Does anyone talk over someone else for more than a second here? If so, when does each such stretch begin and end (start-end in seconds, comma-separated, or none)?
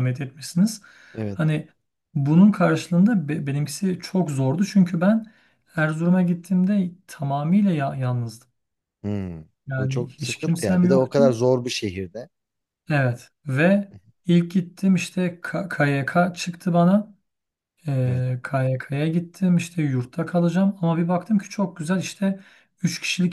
9.7-11.2